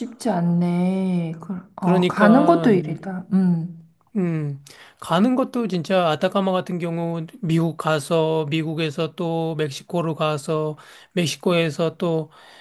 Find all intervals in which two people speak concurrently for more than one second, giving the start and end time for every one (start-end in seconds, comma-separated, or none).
1.8-3.0